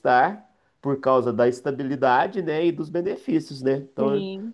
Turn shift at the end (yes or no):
no